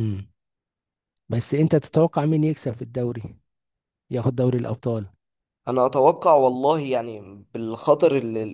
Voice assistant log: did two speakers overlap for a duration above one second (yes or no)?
no